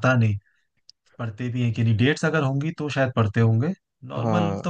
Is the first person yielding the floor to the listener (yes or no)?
no